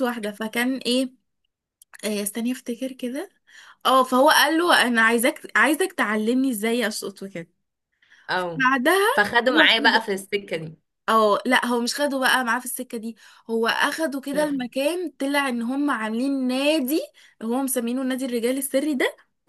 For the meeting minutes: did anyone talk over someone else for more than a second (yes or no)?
no